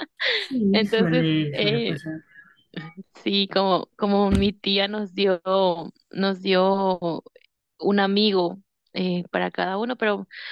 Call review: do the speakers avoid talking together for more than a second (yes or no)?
no